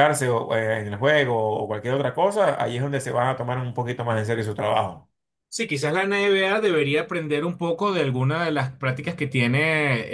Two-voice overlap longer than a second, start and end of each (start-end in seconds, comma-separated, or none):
none